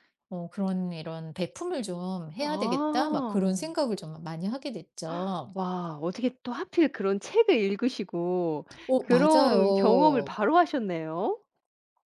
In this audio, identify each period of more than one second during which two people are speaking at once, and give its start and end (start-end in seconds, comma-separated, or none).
2.4-3.7, 8.9-10.4